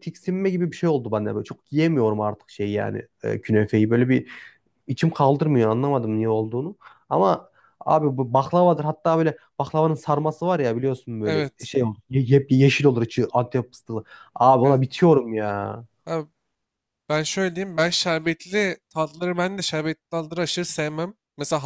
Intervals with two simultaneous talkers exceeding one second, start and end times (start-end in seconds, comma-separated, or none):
none